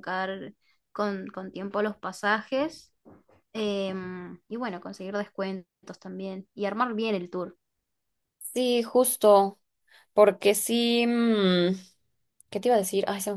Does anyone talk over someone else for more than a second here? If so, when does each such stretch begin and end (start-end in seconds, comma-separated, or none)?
none